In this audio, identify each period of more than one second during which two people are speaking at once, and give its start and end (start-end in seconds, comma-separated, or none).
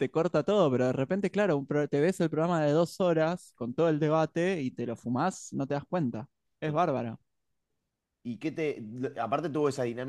none